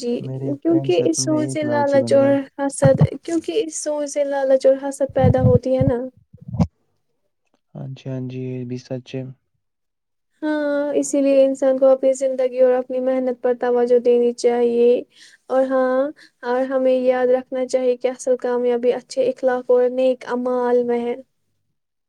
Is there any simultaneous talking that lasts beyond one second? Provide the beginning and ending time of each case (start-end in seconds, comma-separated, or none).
0.6-2.4